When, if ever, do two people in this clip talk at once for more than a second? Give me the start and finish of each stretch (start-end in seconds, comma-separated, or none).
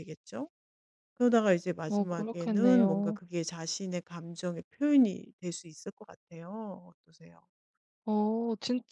1.9-3.2